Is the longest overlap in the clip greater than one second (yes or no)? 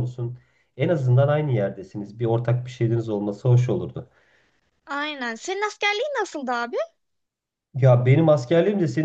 no